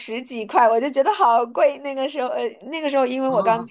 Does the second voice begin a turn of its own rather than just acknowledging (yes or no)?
no